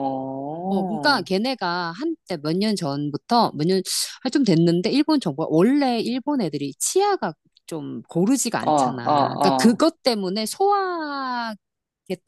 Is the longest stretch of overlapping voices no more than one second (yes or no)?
no